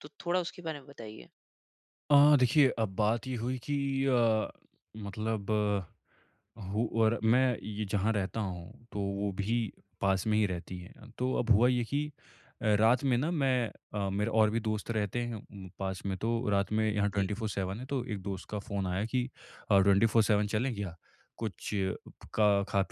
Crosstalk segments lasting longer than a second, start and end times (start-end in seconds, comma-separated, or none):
none